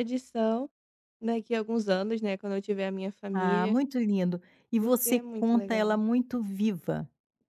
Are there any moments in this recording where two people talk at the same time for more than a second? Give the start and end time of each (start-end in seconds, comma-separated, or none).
4.8-6.0